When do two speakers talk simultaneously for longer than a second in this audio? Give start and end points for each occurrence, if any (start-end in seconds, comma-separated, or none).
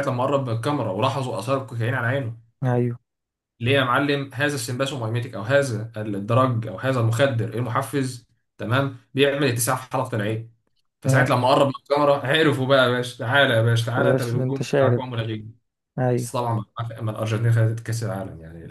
13.8-15.0